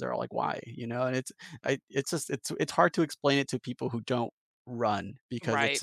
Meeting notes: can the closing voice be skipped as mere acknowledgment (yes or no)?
yes